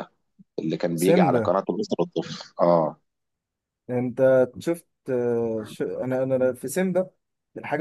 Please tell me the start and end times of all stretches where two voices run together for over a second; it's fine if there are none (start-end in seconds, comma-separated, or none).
none